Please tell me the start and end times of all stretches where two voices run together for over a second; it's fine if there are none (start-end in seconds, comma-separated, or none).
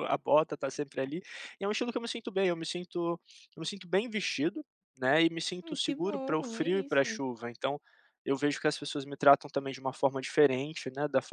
5.6-7.2